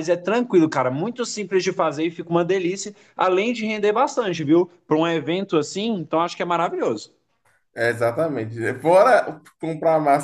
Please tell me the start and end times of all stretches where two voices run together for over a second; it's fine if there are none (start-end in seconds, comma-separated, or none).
none